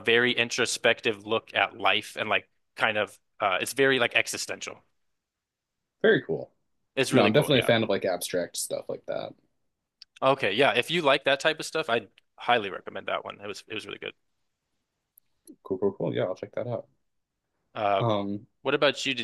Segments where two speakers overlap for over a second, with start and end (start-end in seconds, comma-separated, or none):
none